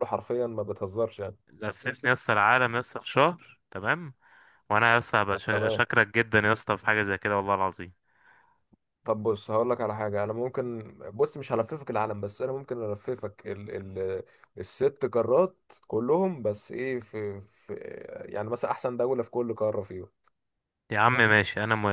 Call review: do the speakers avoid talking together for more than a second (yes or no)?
yes